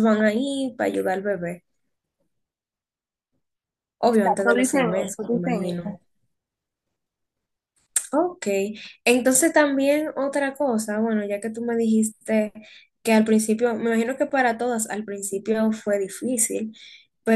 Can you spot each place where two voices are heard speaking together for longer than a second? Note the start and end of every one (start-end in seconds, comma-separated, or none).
4.1-6.0